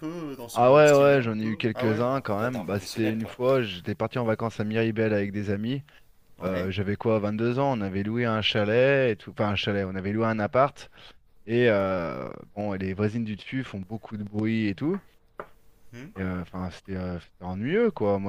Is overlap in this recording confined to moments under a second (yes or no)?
no